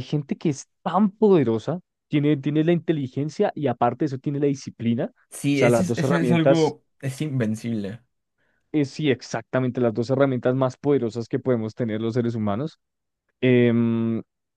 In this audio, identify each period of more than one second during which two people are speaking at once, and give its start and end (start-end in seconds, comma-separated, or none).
5.3-6.8